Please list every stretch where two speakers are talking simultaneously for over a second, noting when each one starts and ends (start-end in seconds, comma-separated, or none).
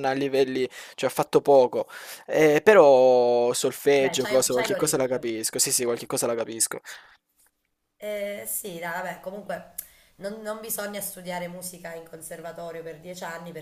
4.0-5.3